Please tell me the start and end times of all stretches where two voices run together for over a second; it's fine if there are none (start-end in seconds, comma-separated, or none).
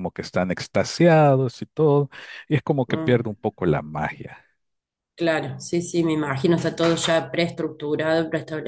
none